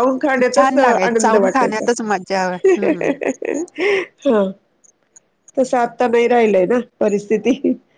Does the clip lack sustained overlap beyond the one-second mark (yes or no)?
no